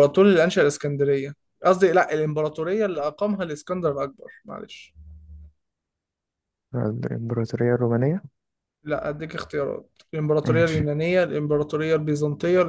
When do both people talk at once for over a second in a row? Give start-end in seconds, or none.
none